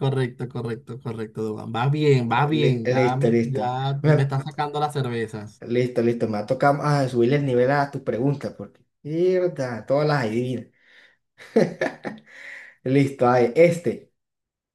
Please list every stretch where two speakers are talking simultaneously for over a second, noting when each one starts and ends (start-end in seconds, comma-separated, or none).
2.3-4.3